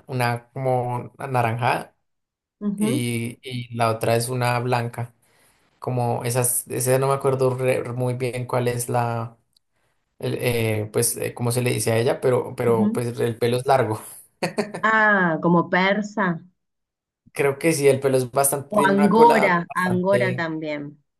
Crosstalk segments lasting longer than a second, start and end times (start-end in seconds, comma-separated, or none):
18.7-20.5